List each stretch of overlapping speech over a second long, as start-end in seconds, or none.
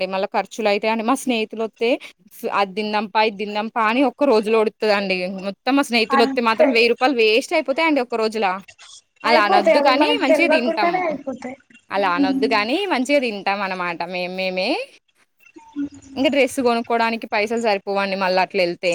9.3-10.9